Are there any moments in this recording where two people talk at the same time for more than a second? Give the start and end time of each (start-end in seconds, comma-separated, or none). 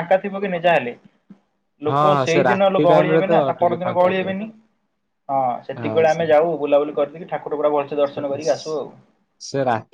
1.9-4.3